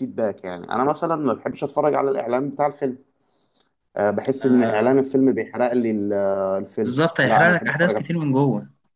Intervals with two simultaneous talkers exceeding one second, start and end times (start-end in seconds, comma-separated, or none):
6.8-8.2